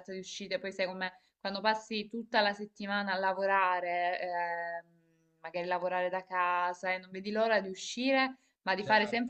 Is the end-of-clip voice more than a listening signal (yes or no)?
no